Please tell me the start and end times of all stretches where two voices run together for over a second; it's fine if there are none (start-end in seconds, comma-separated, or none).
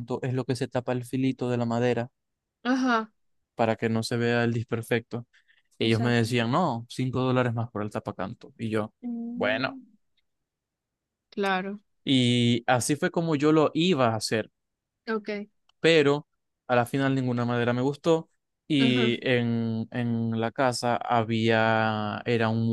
none